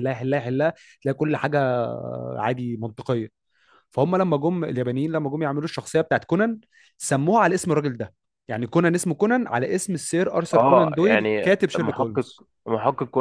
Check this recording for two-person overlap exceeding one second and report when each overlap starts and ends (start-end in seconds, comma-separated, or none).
10.5-12.2